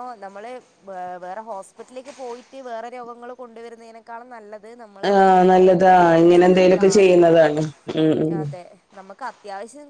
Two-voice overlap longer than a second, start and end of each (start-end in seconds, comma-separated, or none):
5.1-7.1